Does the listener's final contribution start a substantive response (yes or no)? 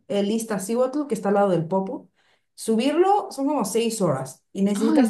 no